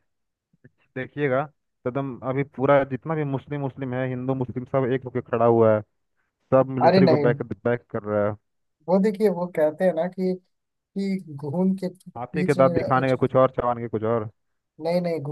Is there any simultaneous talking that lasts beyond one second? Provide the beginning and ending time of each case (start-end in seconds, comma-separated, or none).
none